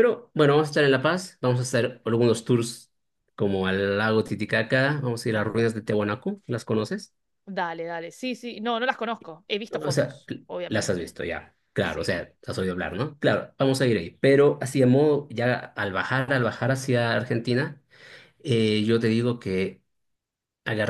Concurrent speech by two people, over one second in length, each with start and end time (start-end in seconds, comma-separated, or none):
9.7-11.1